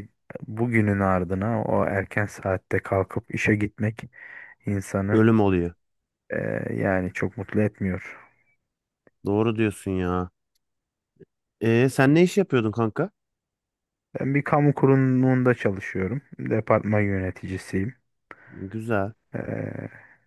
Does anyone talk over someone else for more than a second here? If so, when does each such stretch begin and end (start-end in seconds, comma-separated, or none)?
none